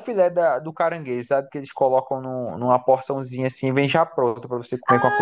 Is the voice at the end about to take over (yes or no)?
yes